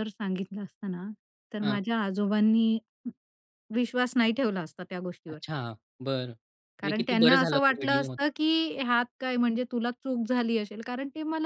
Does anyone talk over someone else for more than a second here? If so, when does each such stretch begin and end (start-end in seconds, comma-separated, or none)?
6.8-8.2